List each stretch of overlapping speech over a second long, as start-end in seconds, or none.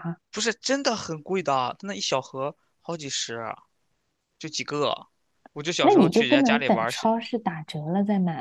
5.8-7.1